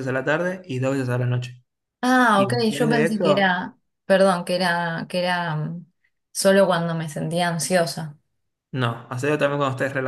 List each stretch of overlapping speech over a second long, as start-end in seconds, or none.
2.3-3.6